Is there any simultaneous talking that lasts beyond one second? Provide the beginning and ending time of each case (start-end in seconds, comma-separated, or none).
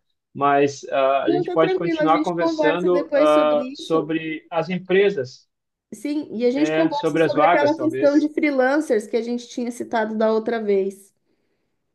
1.3-4.1, 6.5-8.3